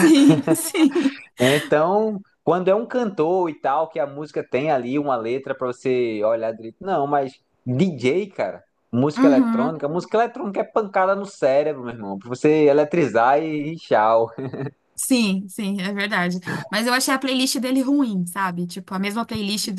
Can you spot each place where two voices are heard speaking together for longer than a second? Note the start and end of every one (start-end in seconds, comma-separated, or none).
none